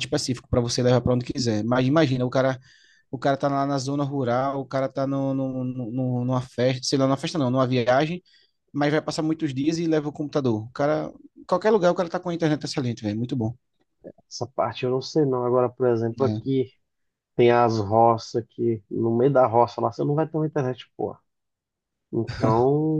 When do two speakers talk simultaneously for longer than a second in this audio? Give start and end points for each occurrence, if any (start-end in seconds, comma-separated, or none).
none